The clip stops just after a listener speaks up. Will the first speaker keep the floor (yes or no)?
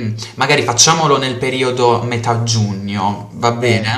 no